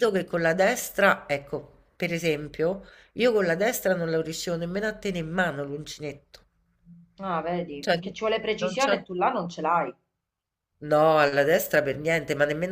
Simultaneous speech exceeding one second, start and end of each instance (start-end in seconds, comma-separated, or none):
none